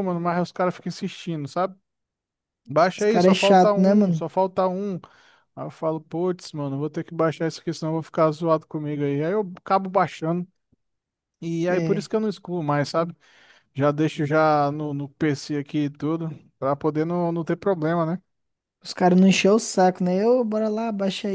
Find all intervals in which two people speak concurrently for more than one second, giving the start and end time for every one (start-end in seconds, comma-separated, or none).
3.0-4.2